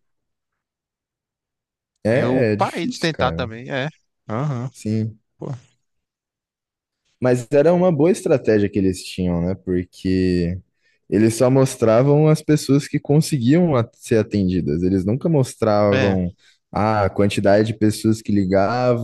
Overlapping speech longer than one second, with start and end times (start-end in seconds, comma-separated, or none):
2.1-3.5